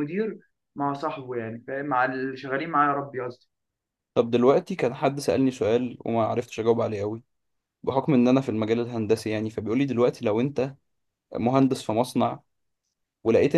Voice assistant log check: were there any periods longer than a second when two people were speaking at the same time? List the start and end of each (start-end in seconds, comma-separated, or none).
none